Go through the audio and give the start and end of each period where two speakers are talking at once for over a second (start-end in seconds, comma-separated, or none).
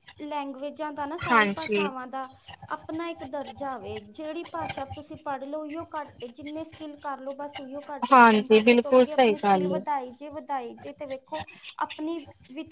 8.1-9.8